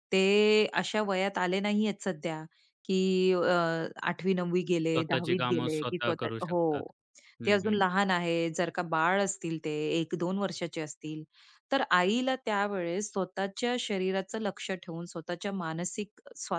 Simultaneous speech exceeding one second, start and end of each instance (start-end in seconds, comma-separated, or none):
4.9-6.6